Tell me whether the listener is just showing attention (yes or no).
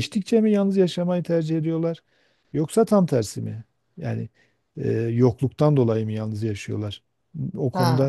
no